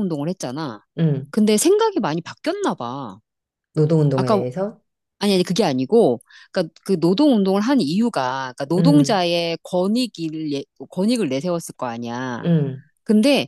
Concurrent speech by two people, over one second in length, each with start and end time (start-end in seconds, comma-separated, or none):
none